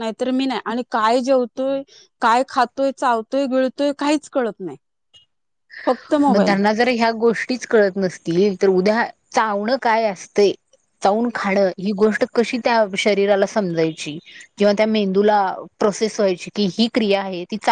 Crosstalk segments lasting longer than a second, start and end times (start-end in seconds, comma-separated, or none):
none